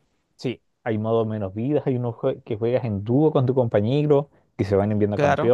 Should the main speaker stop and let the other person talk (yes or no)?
no